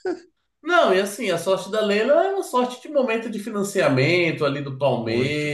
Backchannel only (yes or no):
yes